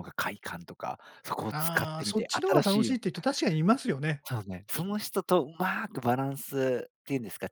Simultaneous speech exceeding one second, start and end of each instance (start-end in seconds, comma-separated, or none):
1.5-2.9